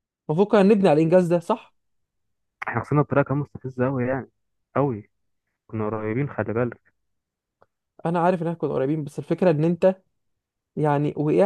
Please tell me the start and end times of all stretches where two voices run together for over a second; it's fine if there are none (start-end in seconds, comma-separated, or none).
none